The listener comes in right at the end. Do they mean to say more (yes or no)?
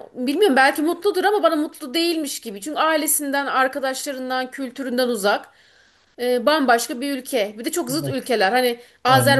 no